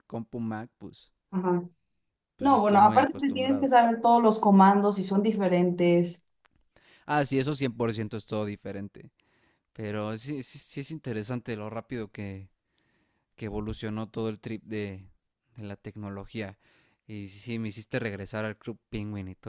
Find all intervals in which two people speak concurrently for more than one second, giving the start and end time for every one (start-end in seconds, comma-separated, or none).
2.4-3.7